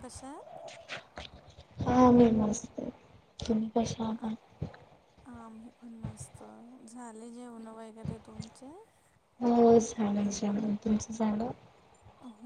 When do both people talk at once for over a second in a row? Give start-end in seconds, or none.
none